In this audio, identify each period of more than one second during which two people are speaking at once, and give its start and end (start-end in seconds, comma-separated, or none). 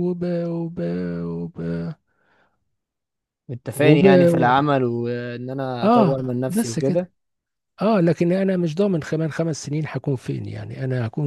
5.8-7.1